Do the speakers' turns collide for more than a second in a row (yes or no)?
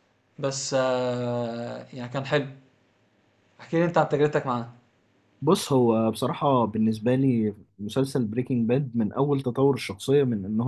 no